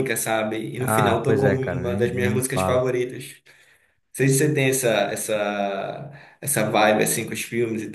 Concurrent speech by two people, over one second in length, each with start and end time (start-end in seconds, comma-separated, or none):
0.8-2.8